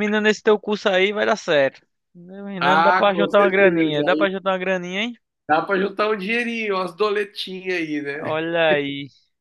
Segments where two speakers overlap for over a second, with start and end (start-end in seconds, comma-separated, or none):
2.6-4.3